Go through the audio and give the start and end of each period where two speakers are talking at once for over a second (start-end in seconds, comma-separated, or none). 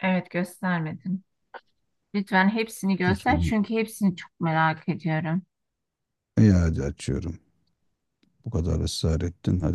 none